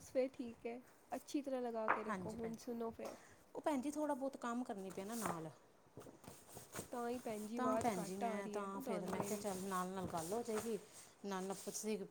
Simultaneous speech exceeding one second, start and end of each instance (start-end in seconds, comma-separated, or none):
7.5-9.4